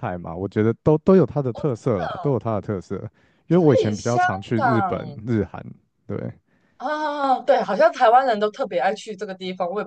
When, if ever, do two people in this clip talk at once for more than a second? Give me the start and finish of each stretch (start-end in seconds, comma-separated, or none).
3.7-5.2